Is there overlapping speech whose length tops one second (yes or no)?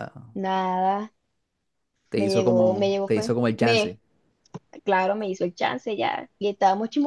yes